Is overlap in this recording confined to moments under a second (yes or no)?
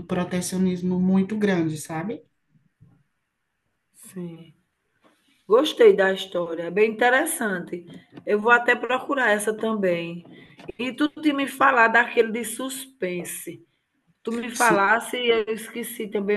yes